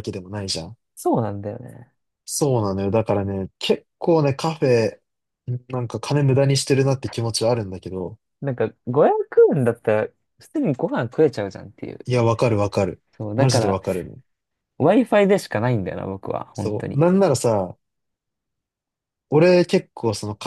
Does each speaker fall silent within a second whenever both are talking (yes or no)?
yes